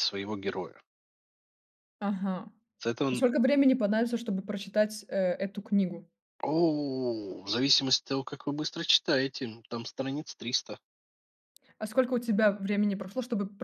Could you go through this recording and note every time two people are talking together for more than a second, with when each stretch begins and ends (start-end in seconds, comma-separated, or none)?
none